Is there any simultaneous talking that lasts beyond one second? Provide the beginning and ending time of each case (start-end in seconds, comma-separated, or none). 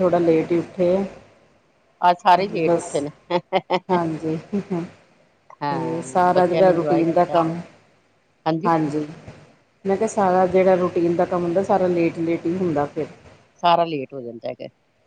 5.6-7.3